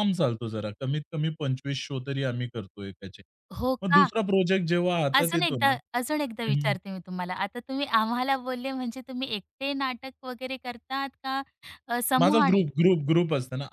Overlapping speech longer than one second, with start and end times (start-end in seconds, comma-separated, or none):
5.2-6.8